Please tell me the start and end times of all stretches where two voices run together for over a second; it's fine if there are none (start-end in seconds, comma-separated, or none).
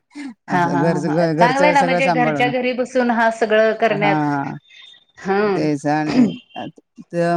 0.5-2.5